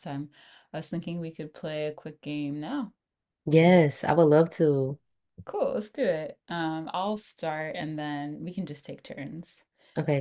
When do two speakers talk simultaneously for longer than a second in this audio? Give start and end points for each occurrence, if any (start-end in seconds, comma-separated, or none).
none